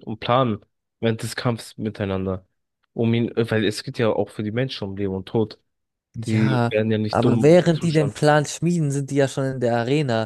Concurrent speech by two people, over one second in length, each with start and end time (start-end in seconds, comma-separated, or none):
6.2-8.2